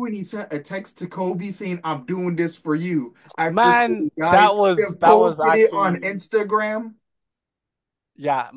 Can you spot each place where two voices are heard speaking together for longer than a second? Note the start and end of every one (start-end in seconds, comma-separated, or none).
3.5-6.0